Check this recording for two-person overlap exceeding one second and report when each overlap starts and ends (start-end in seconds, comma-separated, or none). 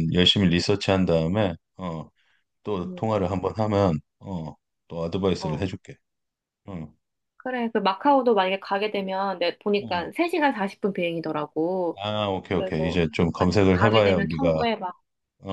12.5-14.6